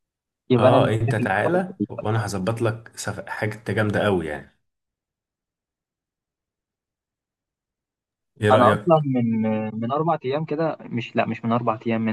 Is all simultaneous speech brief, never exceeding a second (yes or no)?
no